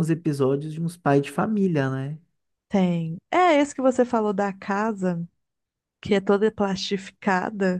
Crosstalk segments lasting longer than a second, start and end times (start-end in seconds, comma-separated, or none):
none